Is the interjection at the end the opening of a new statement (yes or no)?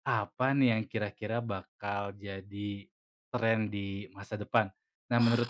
no